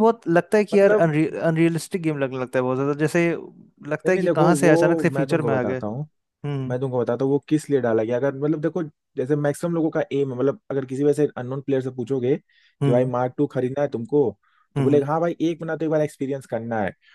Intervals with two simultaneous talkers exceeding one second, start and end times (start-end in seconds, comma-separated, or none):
4.0-5.8